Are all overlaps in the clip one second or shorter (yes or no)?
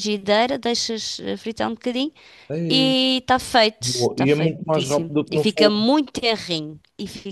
no